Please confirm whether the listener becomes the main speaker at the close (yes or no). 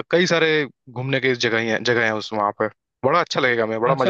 yes